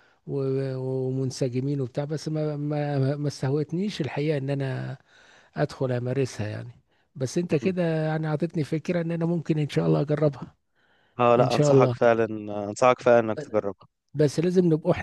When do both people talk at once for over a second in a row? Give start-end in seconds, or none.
none